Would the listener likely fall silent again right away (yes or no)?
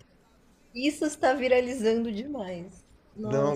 no